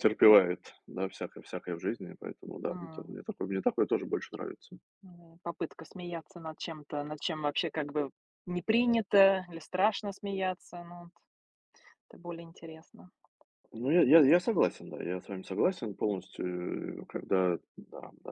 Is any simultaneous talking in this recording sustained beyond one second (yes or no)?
no